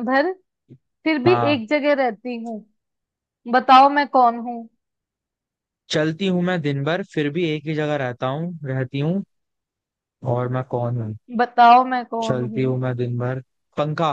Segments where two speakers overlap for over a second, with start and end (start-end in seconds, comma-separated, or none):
none